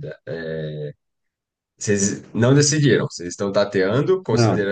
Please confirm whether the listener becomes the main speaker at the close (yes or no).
no